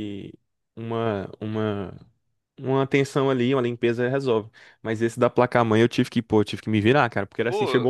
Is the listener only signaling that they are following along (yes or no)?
yes